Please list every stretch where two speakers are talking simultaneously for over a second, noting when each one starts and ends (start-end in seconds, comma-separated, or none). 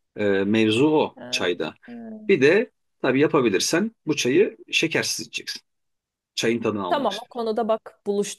none